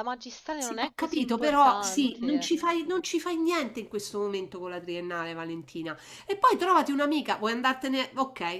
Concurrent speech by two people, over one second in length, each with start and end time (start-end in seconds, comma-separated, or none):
0.6-2.5